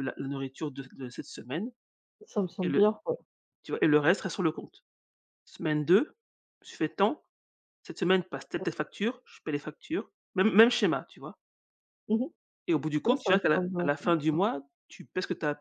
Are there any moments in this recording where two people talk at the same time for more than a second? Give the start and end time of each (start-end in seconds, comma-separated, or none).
13.0-14.4